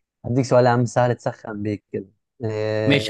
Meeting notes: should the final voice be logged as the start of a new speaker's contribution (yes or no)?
yes